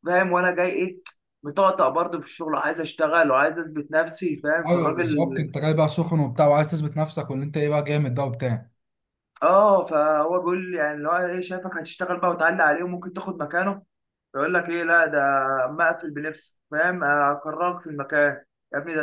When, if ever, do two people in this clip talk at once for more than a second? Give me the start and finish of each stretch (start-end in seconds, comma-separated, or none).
none